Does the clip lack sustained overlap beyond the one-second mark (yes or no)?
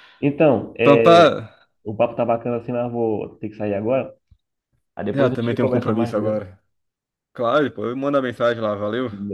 no